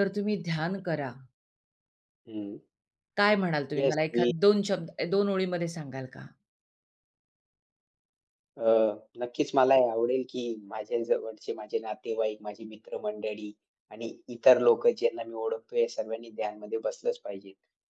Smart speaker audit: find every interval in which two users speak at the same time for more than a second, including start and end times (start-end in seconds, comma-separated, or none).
none